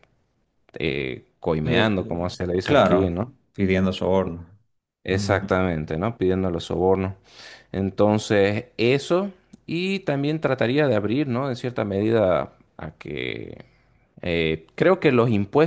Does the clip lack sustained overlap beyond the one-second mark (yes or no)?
no